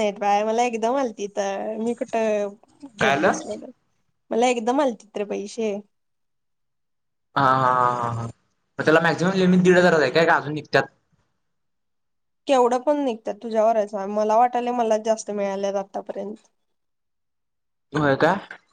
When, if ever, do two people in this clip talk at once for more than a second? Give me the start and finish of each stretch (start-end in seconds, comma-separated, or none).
none